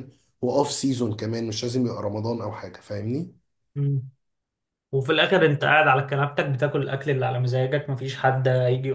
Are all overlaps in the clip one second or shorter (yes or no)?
yes